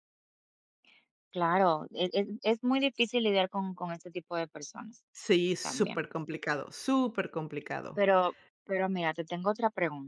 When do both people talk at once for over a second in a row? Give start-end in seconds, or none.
none